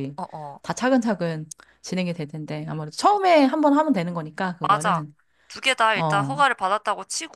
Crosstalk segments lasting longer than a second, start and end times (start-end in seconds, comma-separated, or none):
none